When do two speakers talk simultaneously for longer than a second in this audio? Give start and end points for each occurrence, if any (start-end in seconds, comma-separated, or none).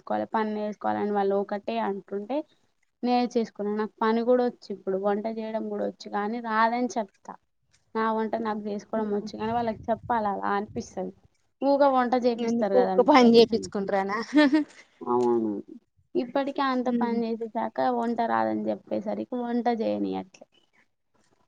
12.5-13.9